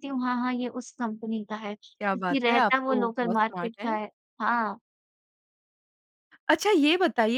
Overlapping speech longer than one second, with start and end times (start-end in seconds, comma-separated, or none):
2.0-4.0